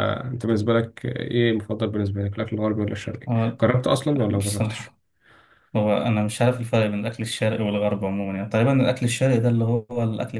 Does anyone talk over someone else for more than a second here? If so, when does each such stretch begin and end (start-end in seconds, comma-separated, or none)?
none